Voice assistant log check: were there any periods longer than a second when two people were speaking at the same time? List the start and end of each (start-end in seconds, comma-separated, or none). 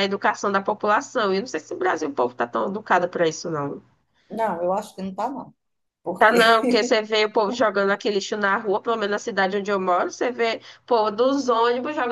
none